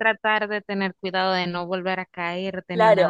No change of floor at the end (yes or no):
no